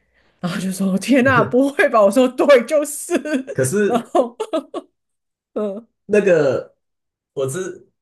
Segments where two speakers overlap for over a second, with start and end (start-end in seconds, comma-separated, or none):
none